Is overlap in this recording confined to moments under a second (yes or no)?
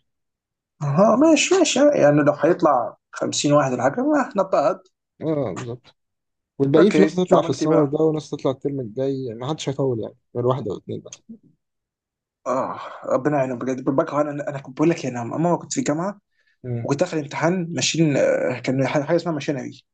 no